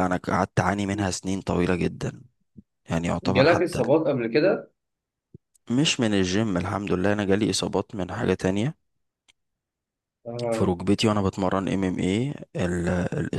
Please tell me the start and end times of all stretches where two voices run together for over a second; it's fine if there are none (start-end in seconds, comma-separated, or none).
none